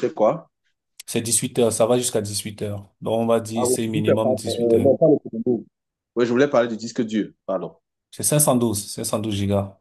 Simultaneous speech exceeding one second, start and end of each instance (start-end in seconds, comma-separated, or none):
3.6-4.9